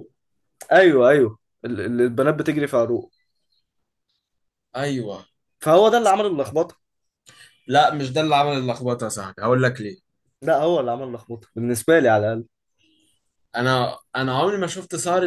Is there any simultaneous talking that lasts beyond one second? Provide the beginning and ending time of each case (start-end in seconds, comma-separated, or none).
none